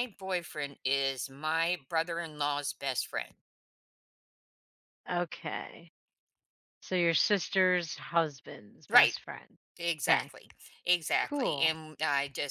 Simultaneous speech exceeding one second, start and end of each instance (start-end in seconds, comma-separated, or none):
none